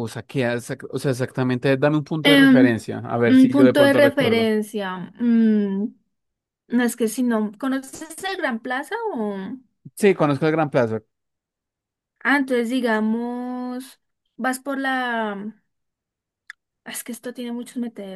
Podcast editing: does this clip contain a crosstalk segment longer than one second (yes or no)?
yes